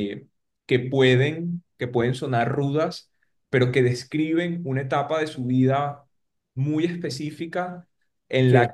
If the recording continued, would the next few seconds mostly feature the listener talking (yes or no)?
no